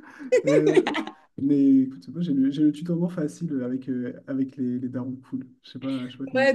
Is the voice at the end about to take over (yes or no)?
yes